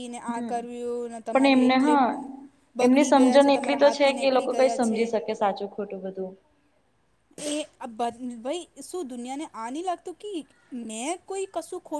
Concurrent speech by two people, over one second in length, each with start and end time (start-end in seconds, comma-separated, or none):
2.9-5.0